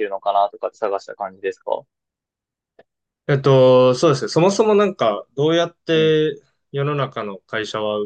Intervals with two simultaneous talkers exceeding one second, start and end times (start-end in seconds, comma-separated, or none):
none